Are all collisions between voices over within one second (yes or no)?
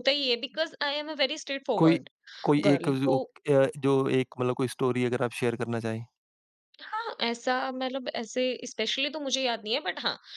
yes